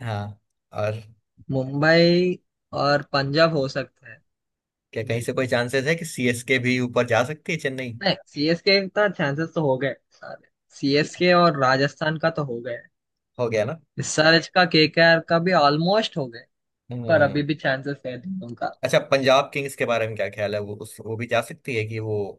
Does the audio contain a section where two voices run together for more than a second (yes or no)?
no